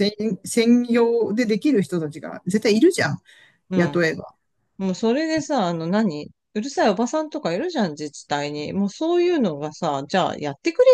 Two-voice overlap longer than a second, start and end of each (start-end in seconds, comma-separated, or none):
none